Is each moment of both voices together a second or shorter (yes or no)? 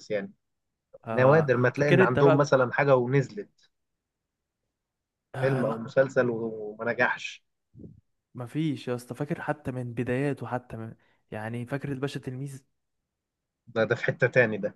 no